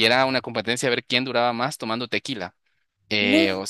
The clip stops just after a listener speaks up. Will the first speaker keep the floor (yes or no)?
yes